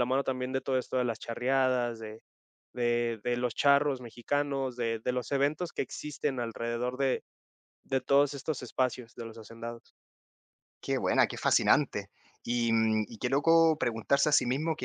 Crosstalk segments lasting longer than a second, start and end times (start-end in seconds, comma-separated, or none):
none